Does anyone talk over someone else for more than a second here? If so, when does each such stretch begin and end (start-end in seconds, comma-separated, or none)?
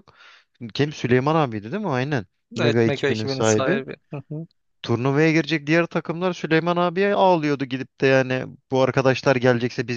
2.6-3.8